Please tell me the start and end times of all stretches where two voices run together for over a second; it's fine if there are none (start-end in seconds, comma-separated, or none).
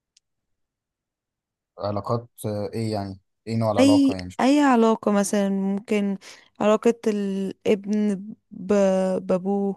none